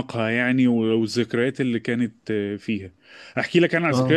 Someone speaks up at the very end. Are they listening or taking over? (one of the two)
listening